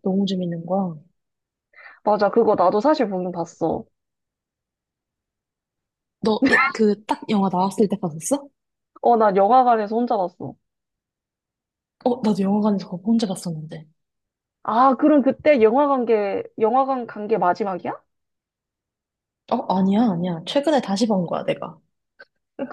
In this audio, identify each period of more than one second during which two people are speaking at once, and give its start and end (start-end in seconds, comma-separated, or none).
none